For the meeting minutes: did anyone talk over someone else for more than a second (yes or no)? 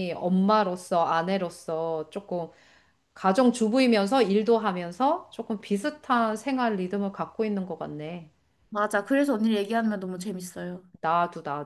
no